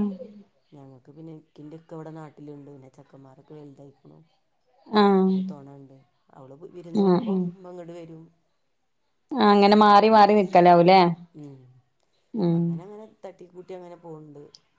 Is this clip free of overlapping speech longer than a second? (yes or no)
yes